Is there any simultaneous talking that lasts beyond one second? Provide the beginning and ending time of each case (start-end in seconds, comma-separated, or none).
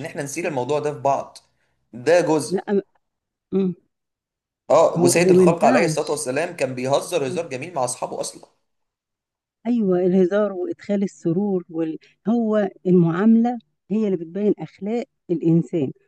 5.0-6.3